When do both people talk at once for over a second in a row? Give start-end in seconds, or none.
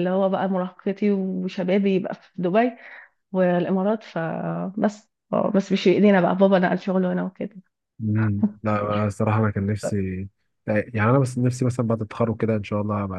none